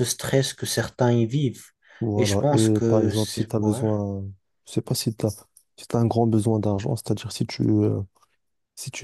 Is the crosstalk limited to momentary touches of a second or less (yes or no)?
no